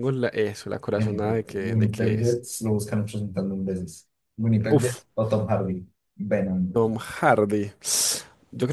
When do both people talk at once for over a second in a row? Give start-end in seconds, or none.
1.0-2.4